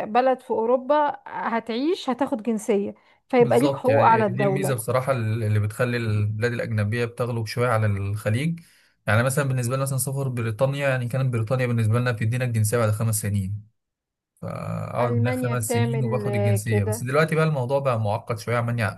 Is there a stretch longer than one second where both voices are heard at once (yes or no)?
yes